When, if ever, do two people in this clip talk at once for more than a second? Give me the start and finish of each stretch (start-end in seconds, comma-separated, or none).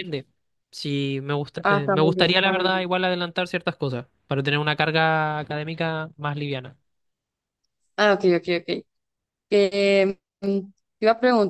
1.6-2.9